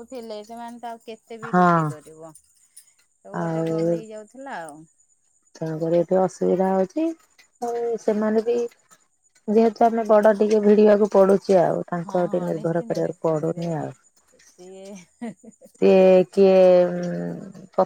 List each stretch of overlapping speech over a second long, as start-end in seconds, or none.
12.1-13.7